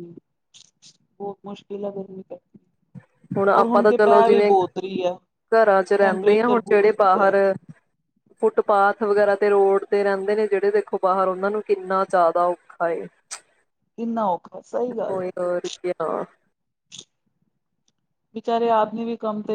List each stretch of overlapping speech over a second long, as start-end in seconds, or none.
6.0-7.3